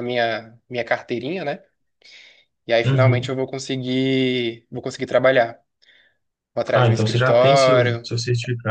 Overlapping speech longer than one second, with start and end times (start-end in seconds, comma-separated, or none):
6.7-8.1